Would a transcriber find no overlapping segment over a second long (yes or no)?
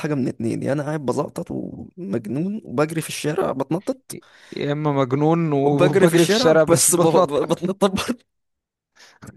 no